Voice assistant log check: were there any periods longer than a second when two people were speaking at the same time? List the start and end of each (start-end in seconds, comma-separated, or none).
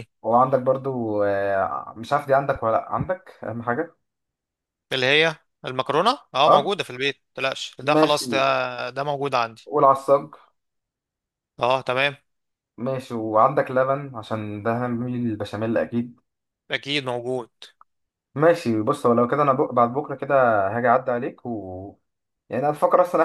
none